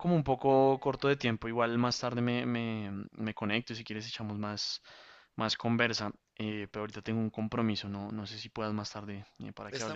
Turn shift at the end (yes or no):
yes